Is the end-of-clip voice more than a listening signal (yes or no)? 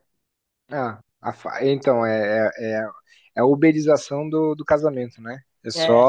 no